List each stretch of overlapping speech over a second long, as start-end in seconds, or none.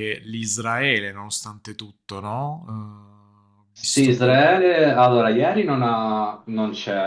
none